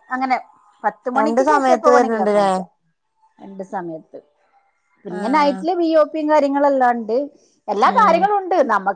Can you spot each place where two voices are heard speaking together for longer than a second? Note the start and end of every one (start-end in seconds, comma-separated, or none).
1.2-2.5